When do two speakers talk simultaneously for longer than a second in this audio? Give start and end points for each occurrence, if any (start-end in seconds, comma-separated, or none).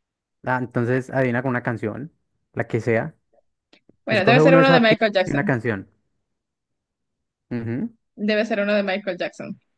4.1-5.5